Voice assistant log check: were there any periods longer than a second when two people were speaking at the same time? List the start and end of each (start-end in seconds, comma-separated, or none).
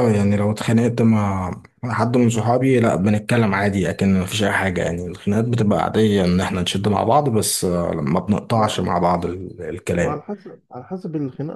none